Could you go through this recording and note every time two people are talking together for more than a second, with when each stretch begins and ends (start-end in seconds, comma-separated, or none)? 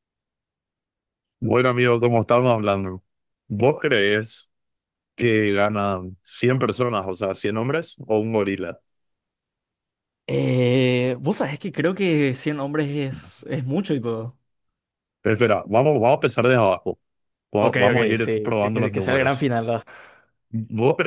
17.6-19.5